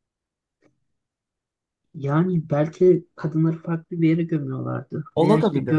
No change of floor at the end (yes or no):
yes